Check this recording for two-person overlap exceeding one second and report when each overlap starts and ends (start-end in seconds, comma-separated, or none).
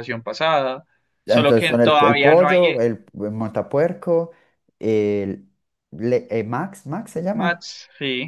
1.3-2.9